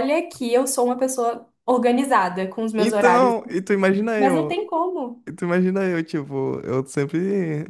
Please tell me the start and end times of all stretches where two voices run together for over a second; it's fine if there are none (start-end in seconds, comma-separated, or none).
none